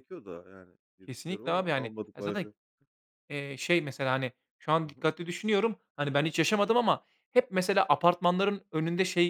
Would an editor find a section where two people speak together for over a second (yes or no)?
yes